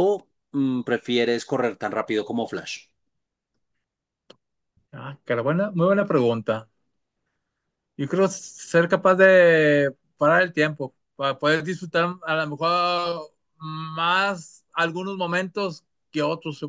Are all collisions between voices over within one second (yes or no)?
yes